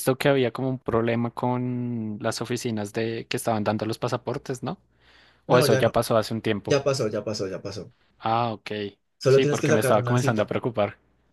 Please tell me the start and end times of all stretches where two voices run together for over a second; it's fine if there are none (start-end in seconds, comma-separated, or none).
9.3-10.5